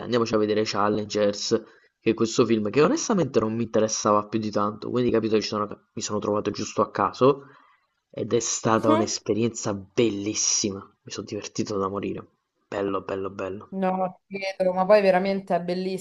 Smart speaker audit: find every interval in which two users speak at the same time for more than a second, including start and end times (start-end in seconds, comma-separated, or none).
none